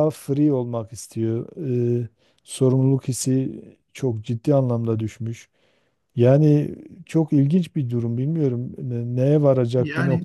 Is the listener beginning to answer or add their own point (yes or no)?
no